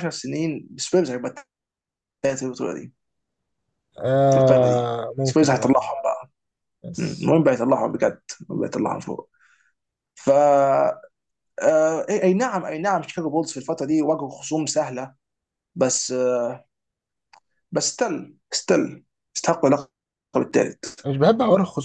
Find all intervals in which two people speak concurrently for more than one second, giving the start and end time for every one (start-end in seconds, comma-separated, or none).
4.3-5.9